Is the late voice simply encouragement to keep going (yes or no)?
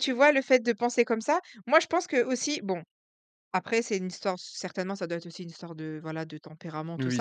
yes